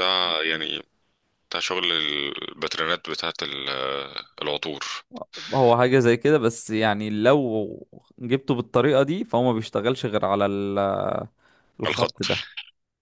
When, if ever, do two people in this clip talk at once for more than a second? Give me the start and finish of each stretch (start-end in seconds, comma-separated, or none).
none